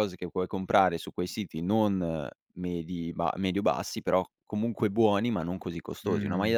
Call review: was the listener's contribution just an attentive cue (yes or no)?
yes